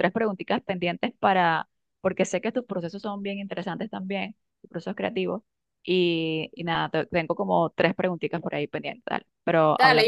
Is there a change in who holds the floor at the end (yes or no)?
yes